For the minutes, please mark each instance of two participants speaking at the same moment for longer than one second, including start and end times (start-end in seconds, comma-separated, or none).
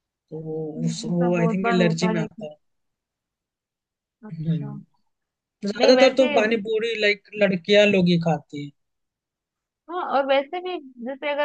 0.8-2.5